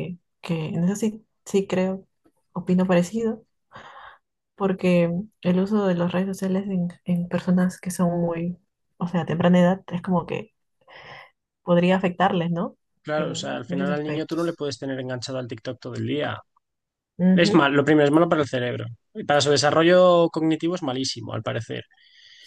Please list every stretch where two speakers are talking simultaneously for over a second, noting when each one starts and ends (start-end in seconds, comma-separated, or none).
13.2-14.6